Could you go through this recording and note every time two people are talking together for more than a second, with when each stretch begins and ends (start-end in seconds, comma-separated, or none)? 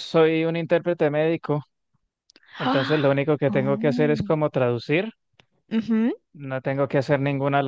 2.6-4.3